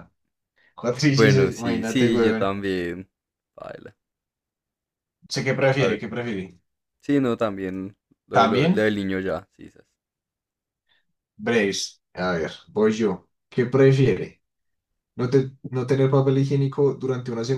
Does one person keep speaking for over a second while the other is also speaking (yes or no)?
yes